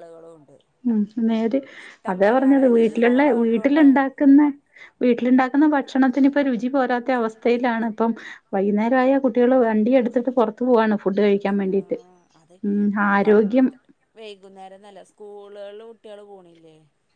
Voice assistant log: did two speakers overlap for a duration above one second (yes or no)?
yes